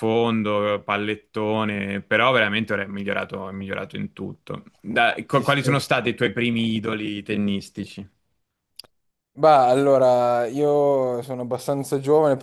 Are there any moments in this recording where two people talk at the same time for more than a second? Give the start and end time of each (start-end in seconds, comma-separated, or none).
none